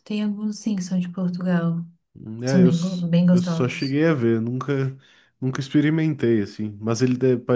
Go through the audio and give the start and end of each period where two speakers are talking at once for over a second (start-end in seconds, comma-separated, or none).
2.5-4.0